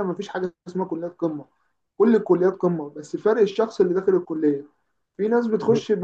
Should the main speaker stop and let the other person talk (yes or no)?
no